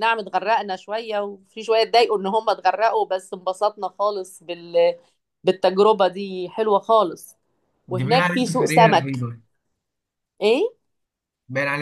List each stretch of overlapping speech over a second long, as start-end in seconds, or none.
8.0-9.2